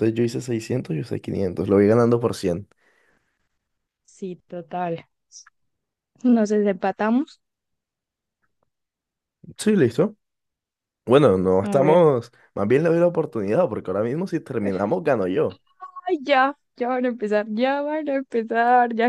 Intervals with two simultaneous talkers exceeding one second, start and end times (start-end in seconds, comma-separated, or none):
none